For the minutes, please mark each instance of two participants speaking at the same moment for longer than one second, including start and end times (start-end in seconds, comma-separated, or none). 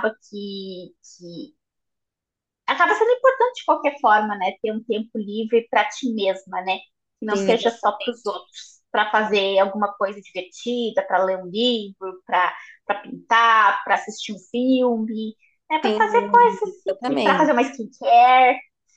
15.8-17.5